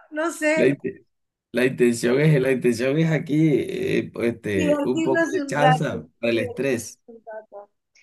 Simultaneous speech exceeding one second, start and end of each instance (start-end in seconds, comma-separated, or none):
4.5-7.0